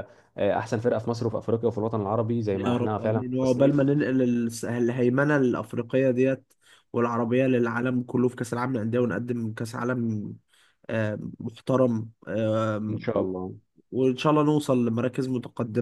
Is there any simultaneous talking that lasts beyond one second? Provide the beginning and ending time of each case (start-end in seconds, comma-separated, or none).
2.5-3.8